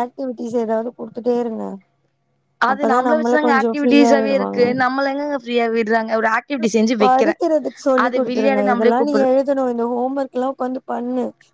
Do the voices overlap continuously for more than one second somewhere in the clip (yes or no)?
yes